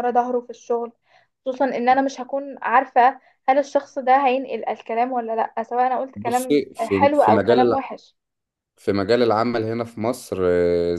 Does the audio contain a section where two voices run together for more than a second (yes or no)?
yes